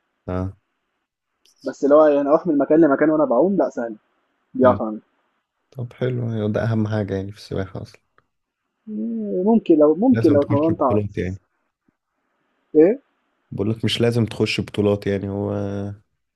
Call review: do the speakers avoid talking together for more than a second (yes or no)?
no